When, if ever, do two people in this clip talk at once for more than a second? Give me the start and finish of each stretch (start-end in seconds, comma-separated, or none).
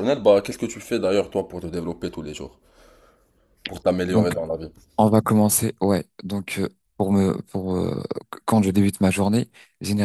none